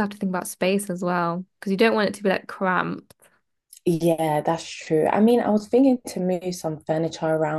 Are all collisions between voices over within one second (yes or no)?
yes